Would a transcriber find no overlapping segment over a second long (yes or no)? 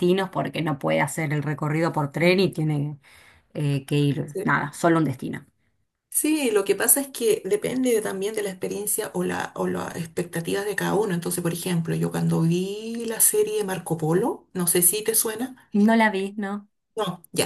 yes